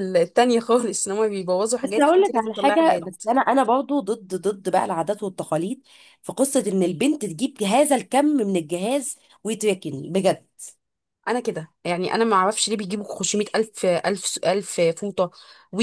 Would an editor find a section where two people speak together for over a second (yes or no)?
yes